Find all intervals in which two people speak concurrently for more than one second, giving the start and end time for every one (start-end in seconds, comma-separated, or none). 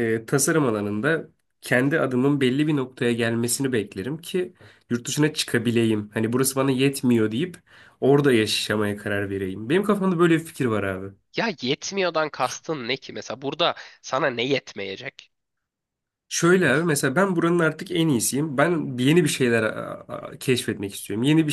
none